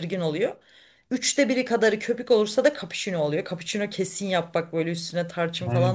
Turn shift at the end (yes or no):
yes